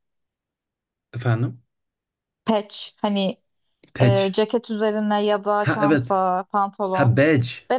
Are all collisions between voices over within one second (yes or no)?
yes